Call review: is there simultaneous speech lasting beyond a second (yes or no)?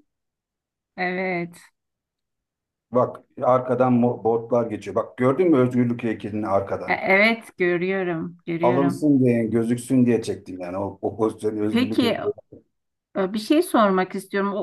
no